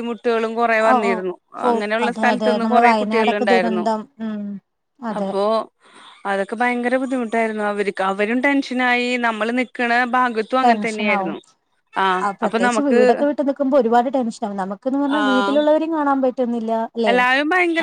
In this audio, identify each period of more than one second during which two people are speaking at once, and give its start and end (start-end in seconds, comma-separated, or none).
2.2-3.8